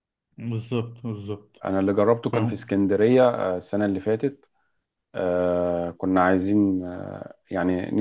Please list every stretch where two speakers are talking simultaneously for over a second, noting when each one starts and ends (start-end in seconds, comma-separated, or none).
none